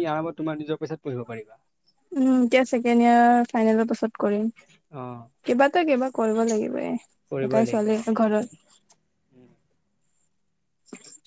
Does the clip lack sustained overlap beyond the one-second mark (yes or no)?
no